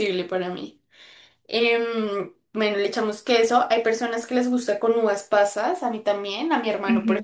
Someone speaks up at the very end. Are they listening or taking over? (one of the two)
taking over